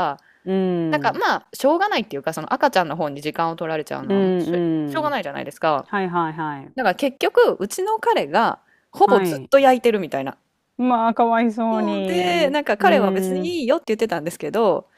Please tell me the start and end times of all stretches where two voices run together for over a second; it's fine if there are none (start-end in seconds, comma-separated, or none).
11.7-13.6